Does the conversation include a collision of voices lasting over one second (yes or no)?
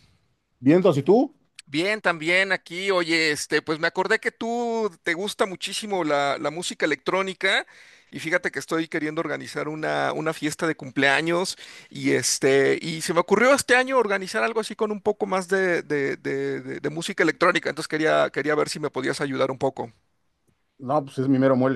no